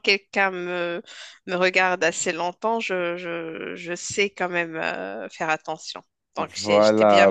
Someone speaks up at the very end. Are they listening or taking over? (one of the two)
taking over